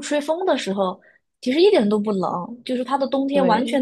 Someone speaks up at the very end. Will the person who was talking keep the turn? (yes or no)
yes